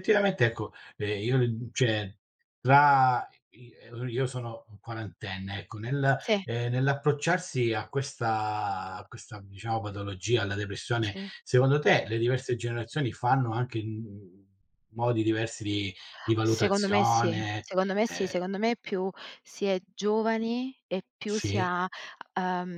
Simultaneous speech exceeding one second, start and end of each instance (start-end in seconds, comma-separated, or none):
16.4-18.4